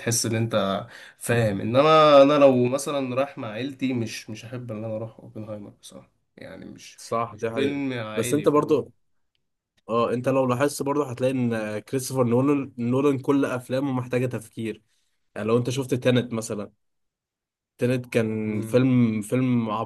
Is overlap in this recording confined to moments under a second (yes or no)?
no